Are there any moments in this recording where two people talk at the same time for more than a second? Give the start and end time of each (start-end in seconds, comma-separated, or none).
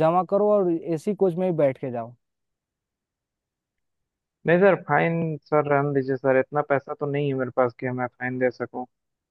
none